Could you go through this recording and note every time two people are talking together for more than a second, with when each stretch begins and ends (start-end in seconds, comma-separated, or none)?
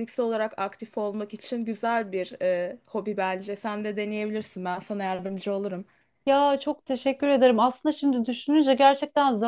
none